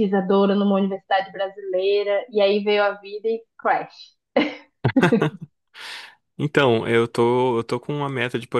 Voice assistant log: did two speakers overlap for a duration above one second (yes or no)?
no